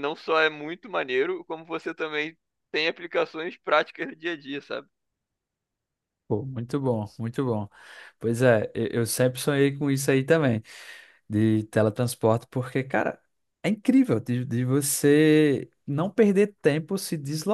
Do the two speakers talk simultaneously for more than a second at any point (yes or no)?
no